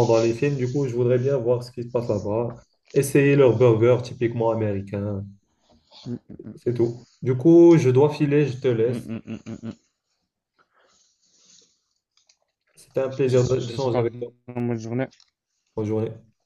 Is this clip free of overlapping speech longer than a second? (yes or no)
no